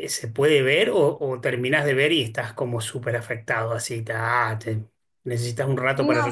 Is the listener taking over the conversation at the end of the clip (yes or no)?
yes